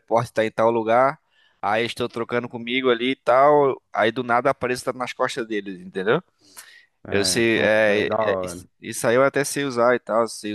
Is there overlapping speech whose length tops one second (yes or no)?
yes